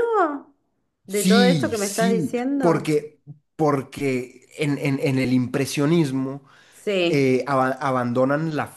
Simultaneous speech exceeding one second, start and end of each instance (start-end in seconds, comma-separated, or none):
1.1-2.9